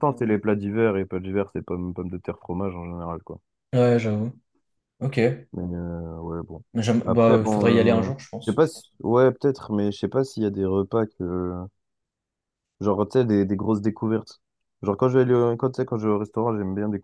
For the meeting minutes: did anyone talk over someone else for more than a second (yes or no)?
yes